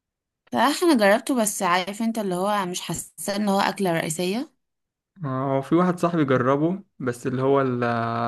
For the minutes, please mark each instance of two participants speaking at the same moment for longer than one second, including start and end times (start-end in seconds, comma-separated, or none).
none